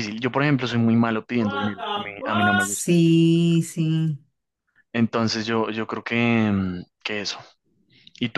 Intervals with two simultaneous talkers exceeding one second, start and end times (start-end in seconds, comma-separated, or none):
1.4-2.9